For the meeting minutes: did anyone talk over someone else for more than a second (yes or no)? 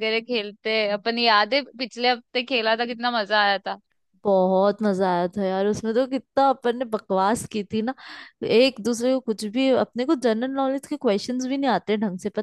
no